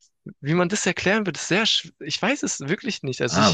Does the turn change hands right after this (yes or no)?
yes